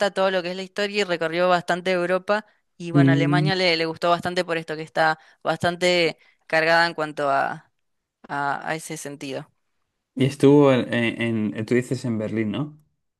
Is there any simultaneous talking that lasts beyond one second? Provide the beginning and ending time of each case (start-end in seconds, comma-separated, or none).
none